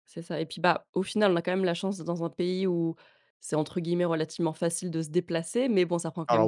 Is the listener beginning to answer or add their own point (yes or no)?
no